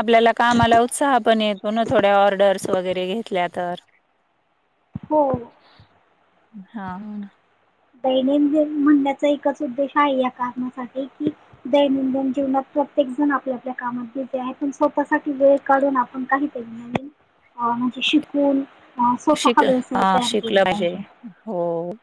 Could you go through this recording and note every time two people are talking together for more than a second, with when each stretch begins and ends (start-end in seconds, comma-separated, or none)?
19.4-20.8